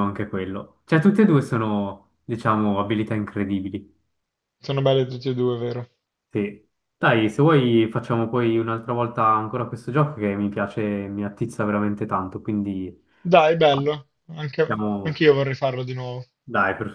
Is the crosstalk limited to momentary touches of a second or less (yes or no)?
yes